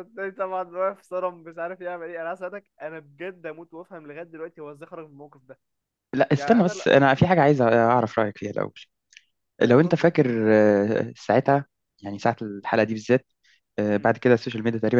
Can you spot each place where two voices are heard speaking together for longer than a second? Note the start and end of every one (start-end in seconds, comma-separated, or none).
none